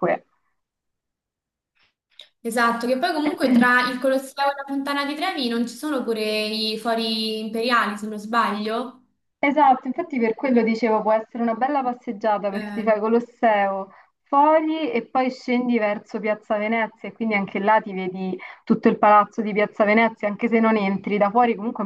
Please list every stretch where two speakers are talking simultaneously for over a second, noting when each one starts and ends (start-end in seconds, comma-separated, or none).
none